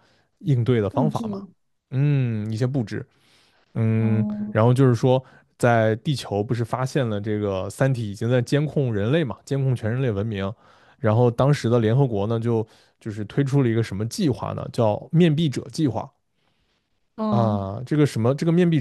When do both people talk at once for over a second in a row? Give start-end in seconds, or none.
none